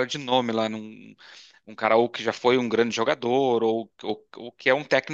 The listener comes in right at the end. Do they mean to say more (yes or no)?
yes